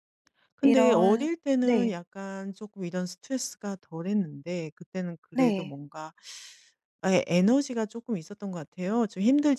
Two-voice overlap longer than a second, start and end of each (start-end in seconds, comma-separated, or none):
0.6-1.9